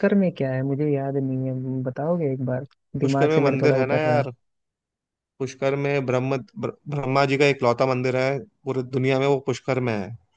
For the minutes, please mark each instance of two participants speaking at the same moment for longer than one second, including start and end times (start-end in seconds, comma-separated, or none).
3.0-4.2